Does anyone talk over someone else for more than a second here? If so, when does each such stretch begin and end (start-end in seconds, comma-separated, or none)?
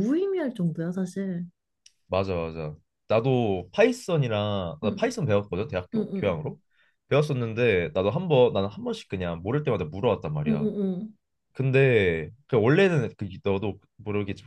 none